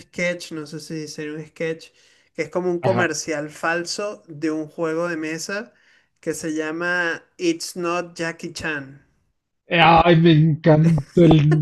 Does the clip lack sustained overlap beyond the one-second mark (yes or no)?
yes